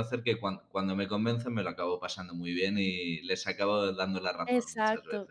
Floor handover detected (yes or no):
yes